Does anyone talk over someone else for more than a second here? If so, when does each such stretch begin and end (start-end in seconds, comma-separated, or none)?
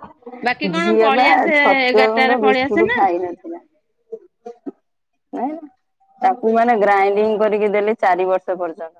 0.8-3.1